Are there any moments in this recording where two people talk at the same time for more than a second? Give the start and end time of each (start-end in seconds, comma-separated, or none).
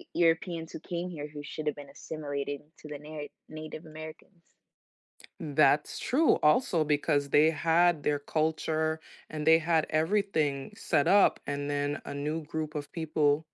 none